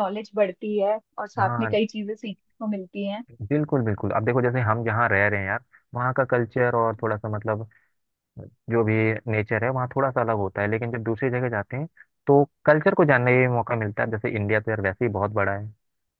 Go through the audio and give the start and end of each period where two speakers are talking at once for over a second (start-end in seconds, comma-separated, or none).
none